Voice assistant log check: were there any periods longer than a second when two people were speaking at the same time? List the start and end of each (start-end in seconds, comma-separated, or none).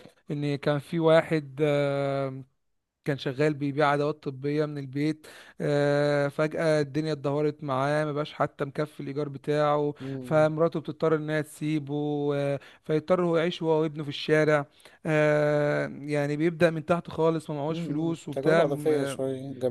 17.7-19.2